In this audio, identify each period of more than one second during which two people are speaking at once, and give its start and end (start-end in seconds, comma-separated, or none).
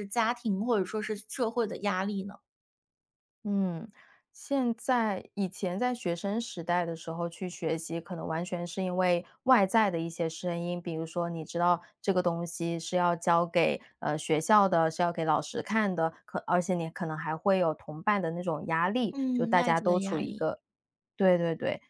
19.1-20.5